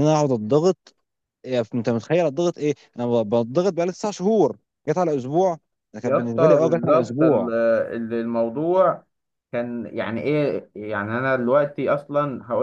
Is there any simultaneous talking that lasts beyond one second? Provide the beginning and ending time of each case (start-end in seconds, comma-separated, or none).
6.0-7.5